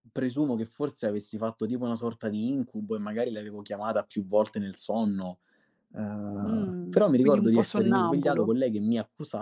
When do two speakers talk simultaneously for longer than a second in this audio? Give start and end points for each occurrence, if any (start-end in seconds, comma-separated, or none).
6.4-8.5